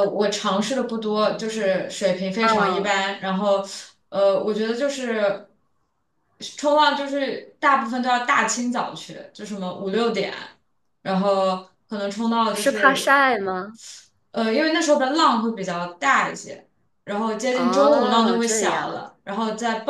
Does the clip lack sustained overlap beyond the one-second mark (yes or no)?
no